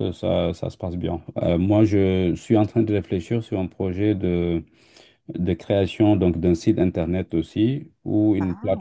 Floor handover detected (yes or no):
no